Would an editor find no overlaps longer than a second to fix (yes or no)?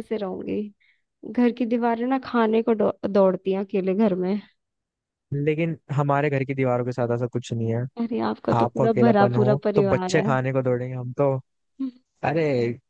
no